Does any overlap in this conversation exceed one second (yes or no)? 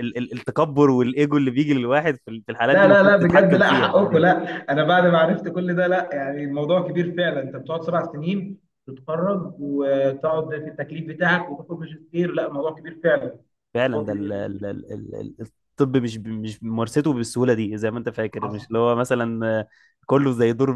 yes